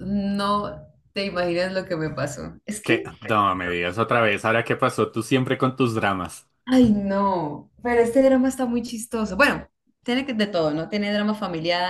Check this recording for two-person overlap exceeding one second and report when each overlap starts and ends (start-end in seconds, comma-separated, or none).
none